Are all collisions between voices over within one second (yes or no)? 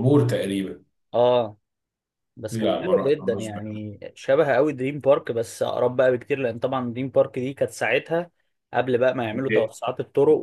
no